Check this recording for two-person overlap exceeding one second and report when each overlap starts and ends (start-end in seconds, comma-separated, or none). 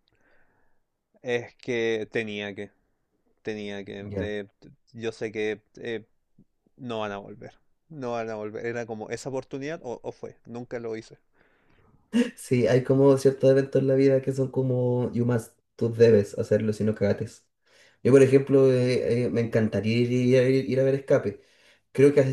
none